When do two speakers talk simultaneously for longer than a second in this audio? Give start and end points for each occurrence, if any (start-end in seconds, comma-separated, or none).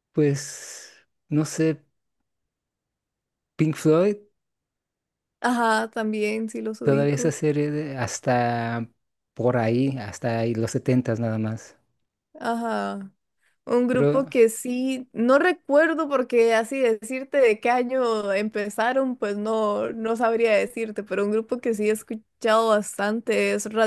none